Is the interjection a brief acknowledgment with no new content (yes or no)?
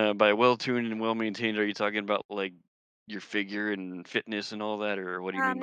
no